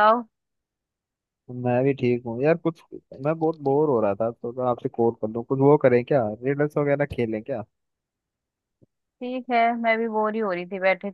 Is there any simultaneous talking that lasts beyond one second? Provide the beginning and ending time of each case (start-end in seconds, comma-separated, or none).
none